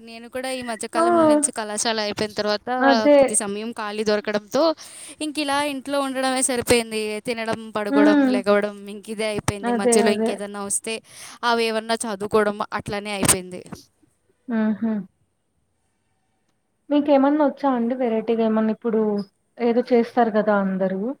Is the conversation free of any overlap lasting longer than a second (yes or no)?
yes